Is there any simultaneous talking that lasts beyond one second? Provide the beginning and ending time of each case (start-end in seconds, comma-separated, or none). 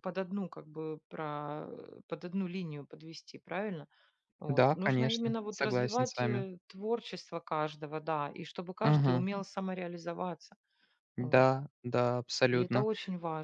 4.5-6.4